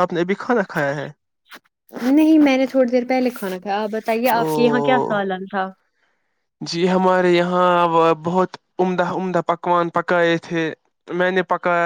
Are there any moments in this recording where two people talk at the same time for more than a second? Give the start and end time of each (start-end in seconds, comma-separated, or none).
none